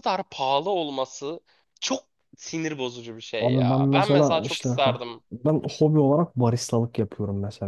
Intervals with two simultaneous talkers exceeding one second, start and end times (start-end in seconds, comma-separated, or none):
3.4-5.2